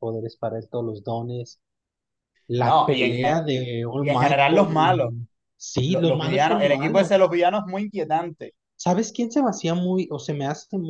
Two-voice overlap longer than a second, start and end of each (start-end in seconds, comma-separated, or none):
2.6-5.1, 5.9-7.3